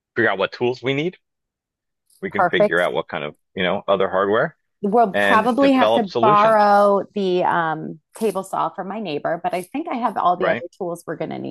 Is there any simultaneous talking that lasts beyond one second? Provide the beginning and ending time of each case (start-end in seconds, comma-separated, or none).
5.1-6.7